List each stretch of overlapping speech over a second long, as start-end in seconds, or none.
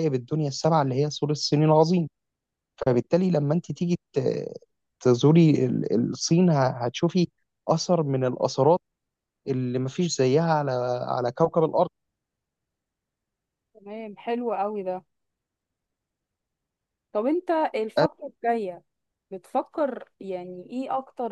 none